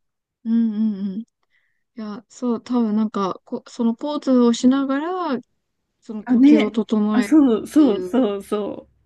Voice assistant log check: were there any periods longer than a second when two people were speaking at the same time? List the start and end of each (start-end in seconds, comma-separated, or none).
6.2-8.2